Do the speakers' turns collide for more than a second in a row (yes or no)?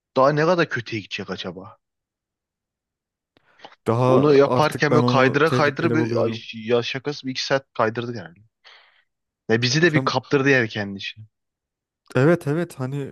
yes